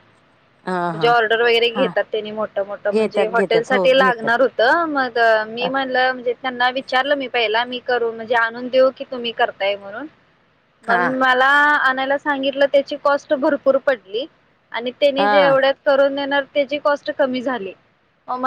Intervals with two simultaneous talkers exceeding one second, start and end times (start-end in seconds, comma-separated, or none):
2.9-4.3